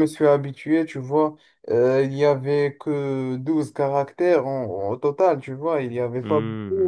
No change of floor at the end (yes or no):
yes